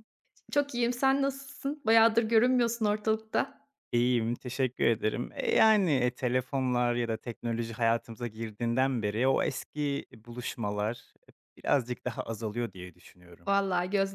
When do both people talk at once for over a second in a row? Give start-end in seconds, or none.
none